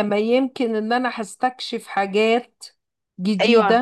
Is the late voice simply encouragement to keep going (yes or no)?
no